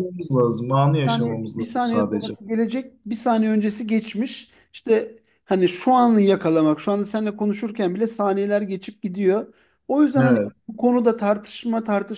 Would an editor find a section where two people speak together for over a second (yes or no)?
yes